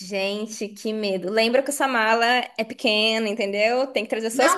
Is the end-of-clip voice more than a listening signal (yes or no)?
yes